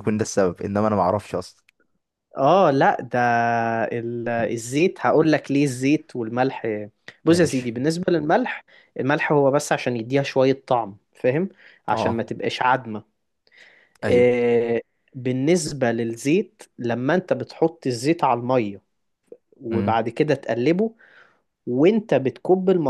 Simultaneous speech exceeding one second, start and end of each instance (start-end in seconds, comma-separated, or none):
none